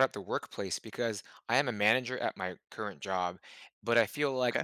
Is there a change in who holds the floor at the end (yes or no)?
no